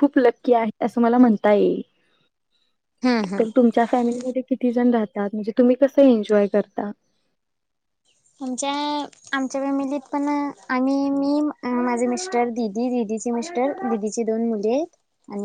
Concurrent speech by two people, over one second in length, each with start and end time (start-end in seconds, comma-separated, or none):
none